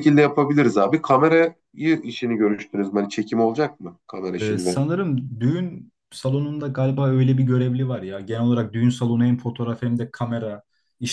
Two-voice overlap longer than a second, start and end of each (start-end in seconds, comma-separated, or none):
none